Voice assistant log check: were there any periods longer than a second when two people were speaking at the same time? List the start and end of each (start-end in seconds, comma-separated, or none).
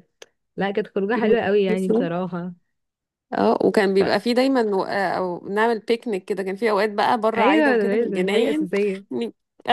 7.4-8.7